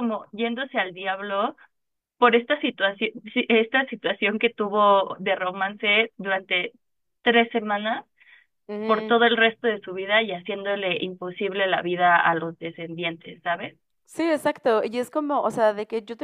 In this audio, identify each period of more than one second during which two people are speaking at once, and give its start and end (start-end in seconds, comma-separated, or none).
none